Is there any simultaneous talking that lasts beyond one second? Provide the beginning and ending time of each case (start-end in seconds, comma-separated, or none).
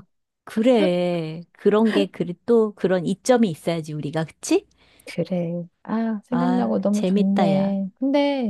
6.3-7.8